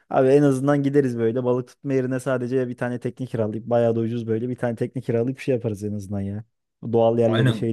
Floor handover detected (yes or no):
yes